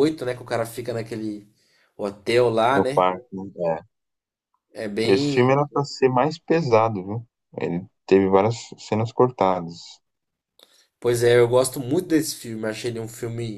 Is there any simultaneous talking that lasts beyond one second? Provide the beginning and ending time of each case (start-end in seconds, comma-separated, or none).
none